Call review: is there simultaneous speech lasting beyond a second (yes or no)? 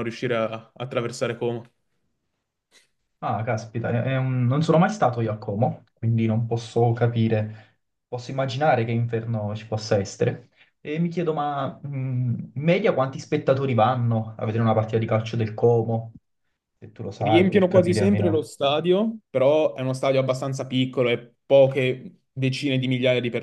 yes